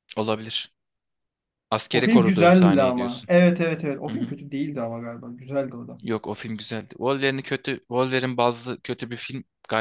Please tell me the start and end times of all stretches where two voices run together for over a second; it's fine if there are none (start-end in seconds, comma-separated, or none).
1.9-3.3